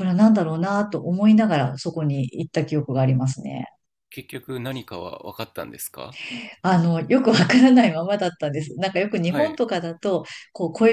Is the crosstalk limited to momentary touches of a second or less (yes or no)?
yes